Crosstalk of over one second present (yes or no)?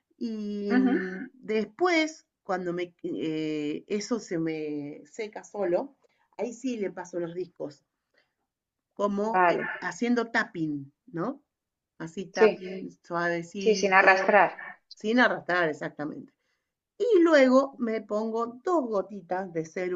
no